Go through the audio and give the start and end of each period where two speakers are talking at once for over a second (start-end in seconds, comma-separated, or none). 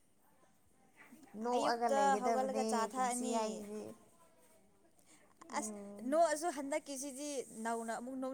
1.6-3.4